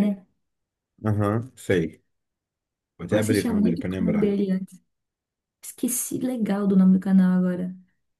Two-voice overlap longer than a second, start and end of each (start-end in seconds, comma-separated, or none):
3.1-4.4